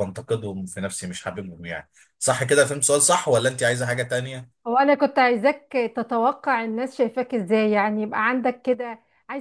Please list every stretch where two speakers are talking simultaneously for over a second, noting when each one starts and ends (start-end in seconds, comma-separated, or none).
none